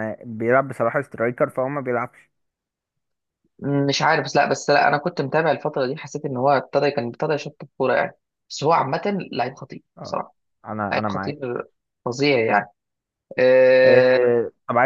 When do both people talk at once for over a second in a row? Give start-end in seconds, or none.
none